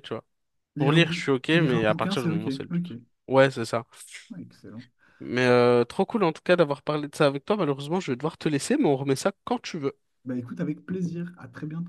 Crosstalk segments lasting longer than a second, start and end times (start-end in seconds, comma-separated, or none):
0.8-2.9